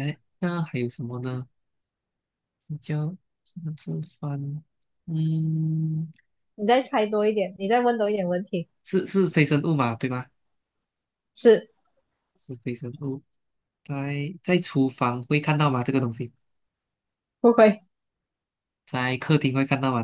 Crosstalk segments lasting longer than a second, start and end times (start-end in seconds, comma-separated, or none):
none